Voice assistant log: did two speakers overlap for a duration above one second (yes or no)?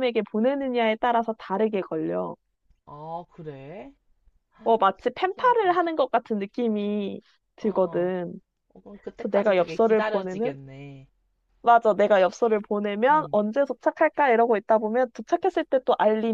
yes